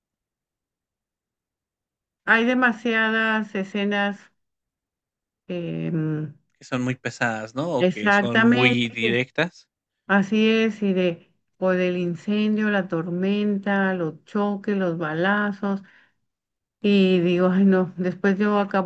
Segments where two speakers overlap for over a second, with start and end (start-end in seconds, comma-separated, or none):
7.8-9.2